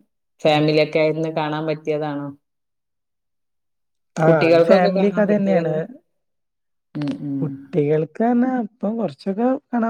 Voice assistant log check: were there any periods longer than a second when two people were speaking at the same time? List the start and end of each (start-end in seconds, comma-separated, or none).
4.3-5.7